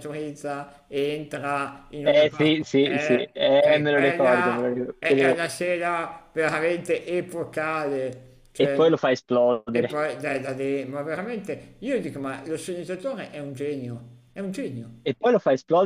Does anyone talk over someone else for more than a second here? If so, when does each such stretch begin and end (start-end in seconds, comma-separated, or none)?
2.0-5.4